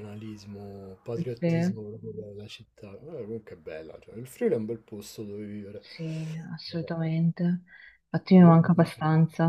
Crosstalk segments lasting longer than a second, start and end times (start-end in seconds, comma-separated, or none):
none